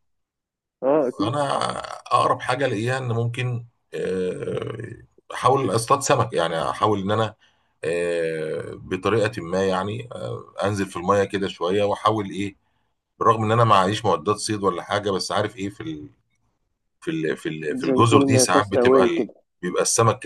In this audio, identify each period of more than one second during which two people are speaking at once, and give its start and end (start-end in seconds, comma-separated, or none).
17.9-19.2